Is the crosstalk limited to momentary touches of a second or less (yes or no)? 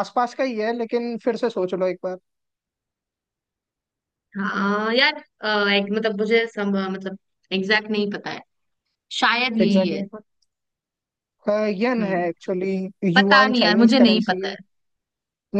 no